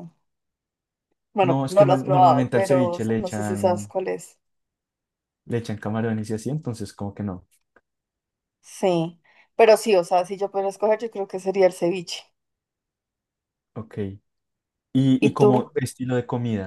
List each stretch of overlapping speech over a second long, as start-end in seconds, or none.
1.5-3.9